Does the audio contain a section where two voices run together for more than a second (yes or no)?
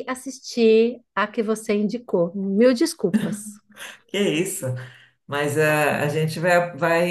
no